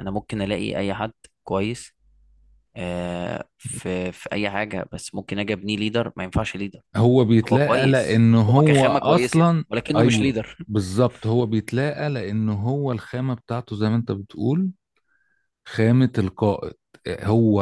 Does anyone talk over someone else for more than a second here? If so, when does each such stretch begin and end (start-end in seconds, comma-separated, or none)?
7.5-10.6